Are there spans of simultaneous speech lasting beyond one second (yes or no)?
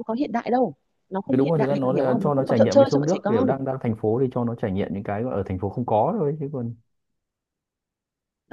yes